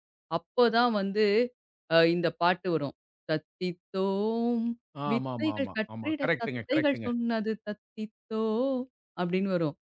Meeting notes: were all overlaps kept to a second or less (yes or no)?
no